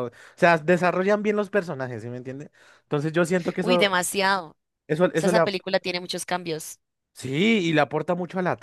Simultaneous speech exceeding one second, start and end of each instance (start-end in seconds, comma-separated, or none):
none